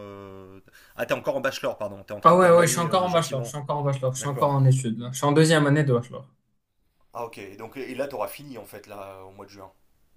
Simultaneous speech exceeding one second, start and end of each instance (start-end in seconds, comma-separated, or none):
2.2-3.5